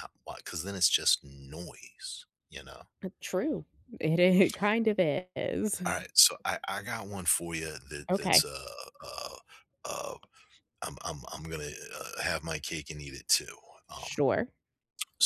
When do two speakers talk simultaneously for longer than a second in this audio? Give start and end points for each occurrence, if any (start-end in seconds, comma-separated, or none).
none